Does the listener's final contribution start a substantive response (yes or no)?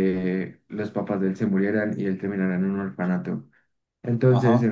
no